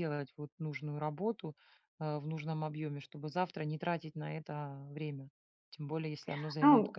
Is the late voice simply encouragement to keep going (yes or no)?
no